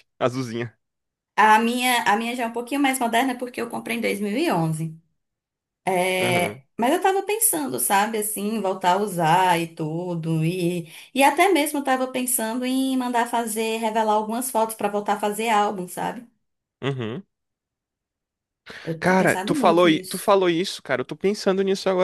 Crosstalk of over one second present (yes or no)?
yes